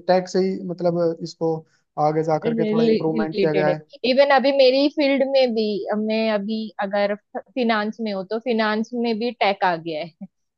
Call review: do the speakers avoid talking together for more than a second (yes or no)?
no